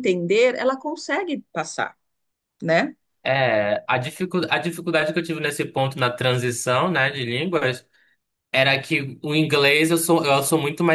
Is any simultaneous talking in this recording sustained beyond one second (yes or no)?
no